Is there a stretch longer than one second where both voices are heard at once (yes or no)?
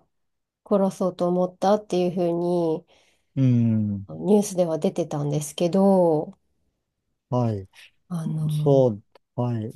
no